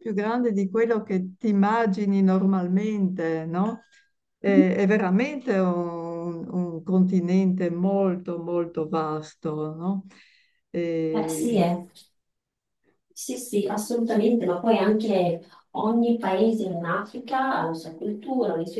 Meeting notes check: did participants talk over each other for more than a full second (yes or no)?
no